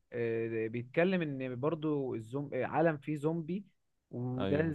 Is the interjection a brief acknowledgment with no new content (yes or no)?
yes